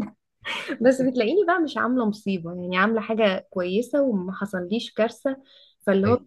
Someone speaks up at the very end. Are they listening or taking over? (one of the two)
listening